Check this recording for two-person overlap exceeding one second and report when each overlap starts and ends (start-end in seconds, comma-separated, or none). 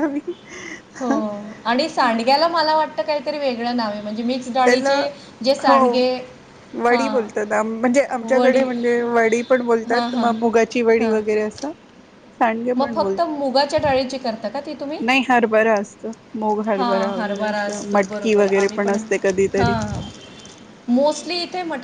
17.1-18.9